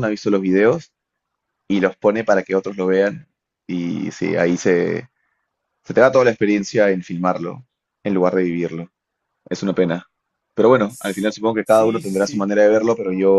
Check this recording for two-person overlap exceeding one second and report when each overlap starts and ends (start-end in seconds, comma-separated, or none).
10.9-12.5